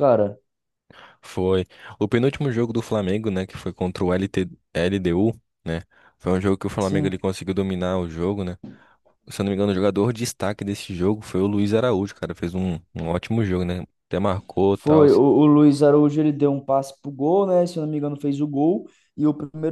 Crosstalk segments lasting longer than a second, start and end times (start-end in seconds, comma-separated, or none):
none